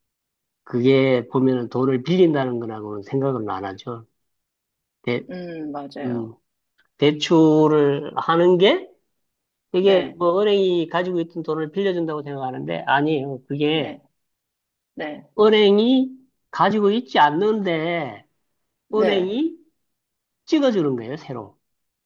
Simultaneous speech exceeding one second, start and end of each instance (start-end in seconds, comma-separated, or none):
none